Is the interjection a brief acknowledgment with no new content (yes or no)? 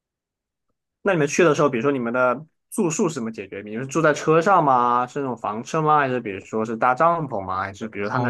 no